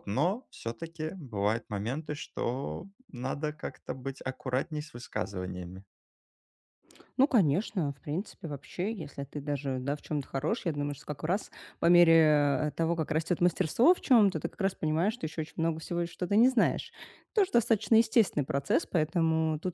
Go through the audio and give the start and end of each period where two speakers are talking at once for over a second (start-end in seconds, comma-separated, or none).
none